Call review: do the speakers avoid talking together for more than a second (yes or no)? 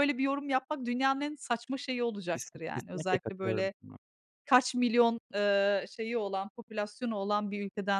no